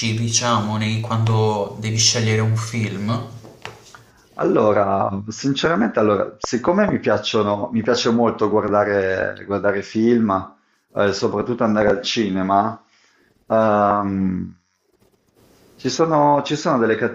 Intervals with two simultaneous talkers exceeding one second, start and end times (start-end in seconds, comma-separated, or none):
none